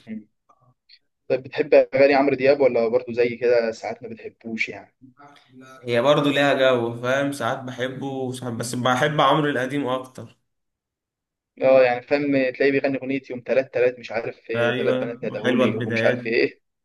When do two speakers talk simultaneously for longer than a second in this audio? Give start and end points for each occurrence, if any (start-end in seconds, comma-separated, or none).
14.5-16.2